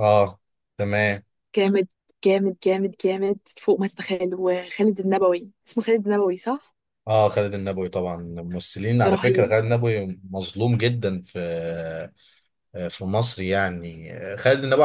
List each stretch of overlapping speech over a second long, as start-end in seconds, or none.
none